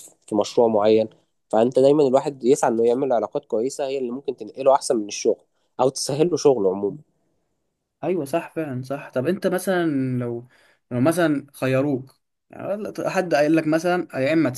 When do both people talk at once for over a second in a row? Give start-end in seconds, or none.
none